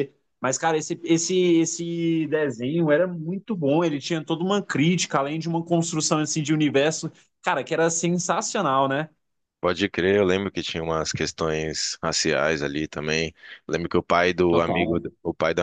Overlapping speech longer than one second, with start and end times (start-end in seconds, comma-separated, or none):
none